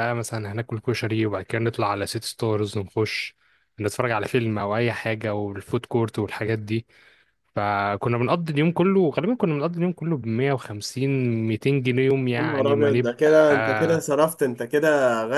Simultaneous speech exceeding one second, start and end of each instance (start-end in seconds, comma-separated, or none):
12.4-14.0